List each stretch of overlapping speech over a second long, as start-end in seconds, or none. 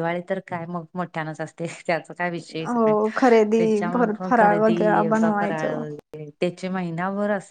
3.6-5.8